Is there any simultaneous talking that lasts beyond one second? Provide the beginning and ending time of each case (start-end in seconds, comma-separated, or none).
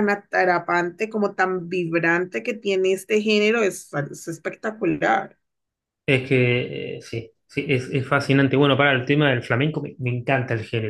none